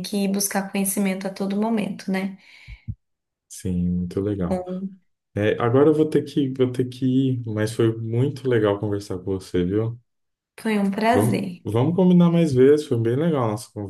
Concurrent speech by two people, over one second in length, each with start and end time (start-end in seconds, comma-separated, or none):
none